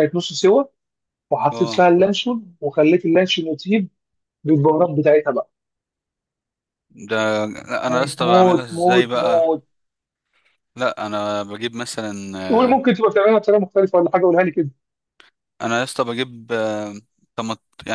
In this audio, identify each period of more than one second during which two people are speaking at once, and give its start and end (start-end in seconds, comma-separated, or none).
7.9-9.4